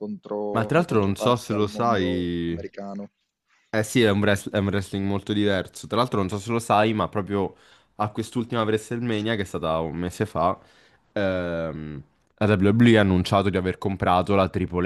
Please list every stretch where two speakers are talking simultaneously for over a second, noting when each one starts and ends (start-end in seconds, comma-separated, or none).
0.5-2.6